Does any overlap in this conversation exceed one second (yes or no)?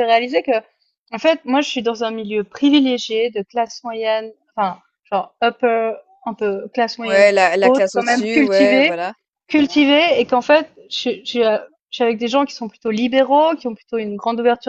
yes